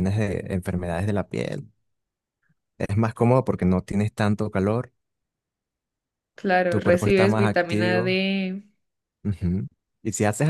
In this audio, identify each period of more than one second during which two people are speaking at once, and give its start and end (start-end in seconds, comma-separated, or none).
6.7-8.2